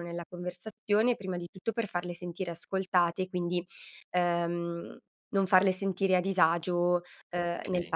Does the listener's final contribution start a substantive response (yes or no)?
no